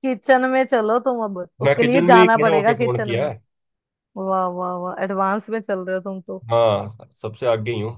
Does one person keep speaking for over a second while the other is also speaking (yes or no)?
yes